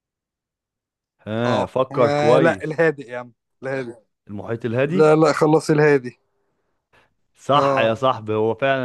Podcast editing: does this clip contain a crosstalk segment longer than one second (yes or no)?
yes